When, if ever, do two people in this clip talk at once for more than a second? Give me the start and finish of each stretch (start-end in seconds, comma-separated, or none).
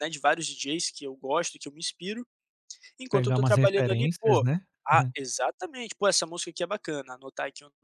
3.1-4.5